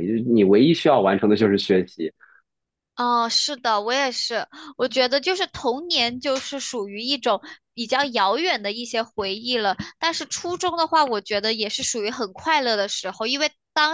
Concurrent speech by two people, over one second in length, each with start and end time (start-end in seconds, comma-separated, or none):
none